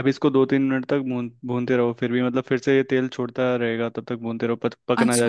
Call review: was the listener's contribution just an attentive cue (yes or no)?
no